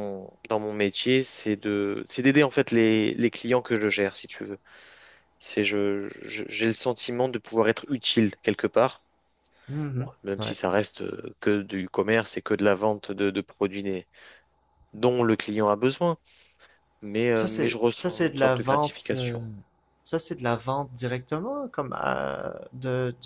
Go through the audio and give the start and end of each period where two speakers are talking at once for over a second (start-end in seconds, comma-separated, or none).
17.3-19.4